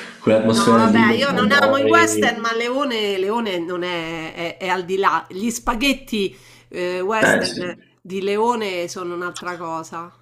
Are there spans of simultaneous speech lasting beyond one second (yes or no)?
yes